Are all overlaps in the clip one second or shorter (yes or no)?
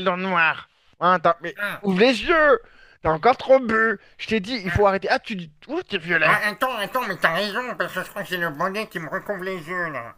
yes